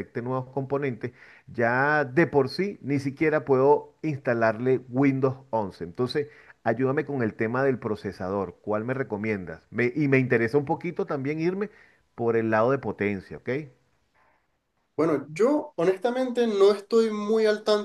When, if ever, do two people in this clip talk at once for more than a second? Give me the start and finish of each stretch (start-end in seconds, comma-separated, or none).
none